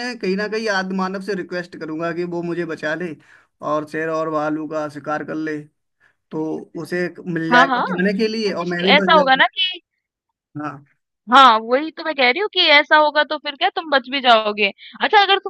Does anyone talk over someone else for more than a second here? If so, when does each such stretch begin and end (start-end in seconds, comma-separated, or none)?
7.5-9.4